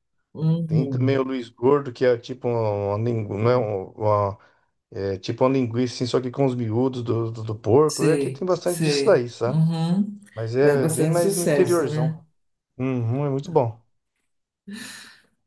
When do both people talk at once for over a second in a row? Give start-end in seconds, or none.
7.9-9.6, 10.6-12.2